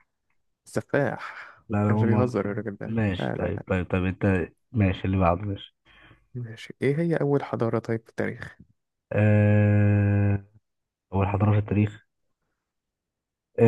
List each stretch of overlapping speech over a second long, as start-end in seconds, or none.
1.7-3.6